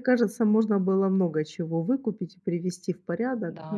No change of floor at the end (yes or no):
no